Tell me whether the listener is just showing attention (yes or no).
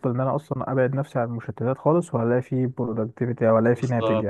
no